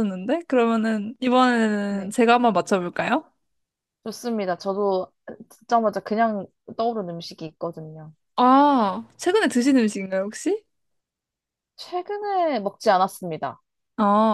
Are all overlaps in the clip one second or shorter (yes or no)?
yes